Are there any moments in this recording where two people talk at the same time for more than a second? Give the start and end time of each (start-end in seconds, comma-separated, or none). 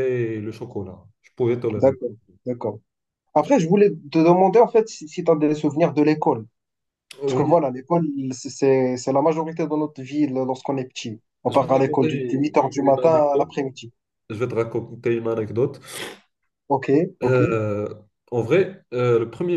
11.5-13.5